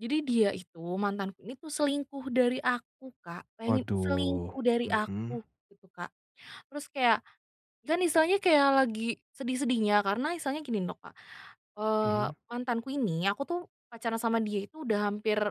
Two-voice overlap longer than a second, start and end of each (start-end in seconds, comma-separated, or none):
3.6-5.4